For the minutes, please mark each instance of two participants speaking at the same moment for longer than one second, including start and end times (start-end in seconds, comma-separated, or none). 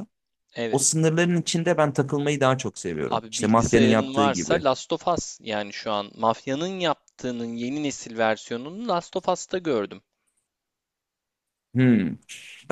3.1-4.6